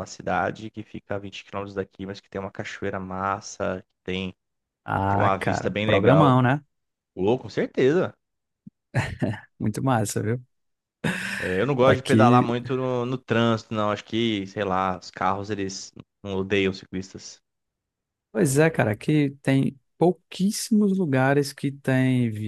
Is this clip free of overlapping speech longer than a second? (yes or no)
no